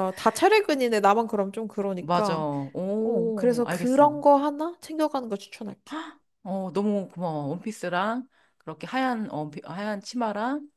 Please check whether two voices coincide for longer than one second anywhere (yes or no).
yes